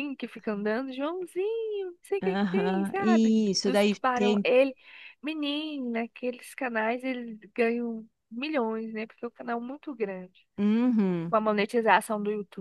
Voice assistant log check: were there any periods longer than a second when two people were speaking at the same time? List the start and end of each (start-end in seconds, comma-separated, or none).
2.2-4.5